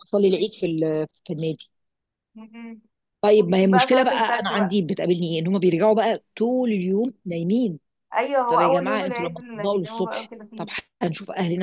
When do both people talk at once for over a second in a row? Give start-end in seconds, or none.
3.4-4.8, 8.5-10.7